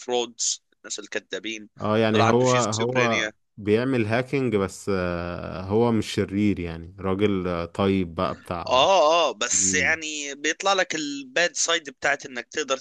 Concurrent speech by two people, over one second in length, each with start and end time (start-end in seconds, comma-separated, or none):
2.1-3.3